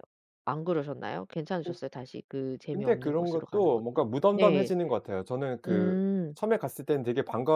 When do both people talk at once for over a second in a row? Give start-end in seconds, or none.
2.7-4.7